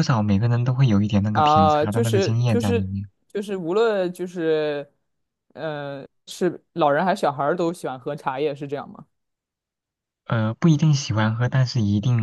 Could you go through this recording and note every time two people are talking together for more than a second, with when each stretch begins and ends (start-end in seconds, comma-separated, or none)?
1.3-3.0